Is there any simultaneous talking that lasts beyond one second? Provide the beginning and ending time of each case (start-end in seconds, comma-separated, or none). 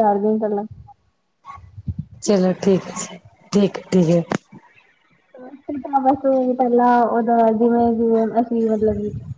none